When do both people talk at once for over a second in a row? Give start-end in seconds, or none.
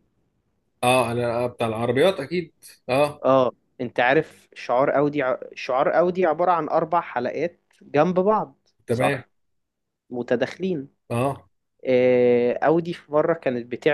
none